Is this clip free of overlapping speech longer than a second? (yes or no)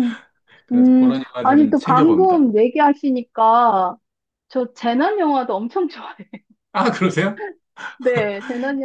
no